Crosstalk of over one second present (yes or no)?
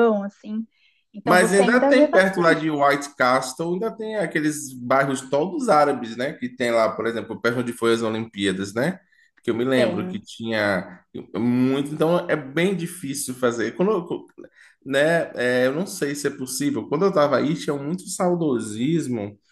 yes